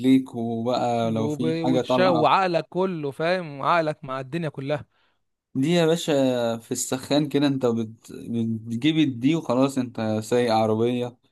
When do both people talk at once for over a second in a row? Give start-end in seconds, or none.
1.1-2.3